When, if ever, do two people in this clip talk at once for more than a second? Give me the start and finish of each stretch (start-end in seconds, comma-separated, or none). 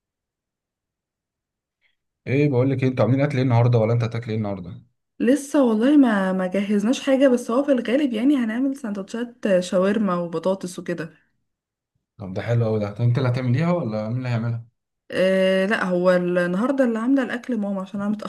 none